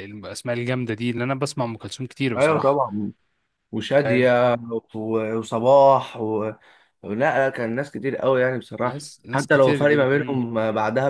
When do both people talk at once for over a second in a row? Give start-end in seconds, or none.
8.8-10.4